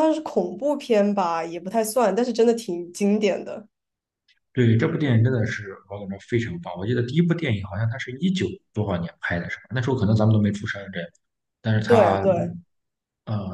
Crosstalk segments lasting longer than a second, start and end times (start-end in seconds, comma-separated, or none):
none